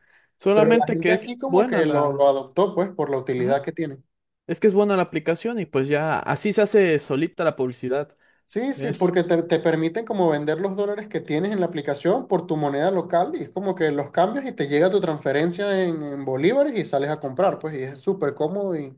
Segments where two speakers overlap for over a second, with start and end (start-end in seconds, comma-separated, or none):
0.5-2.3